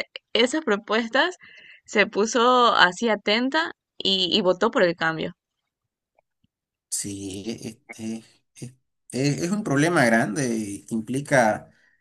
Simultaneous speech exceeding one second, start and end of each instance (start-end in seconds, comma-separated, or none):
none